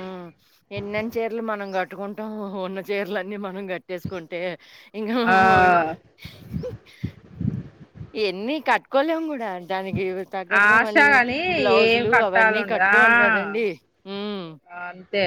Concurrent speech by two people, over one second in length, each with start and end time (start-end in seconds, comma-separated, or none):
11.8-13.6